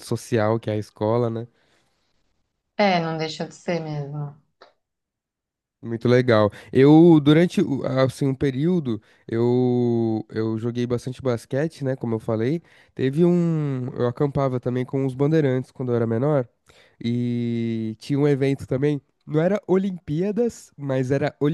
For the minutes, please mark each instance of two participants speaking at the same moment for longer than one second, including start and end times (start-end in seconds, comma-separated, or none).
none